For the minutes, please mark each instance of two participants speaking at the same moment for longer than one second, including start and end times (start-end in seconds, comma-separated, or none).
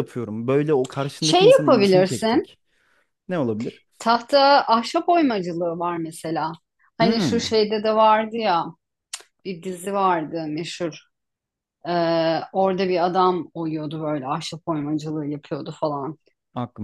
1.2-2.5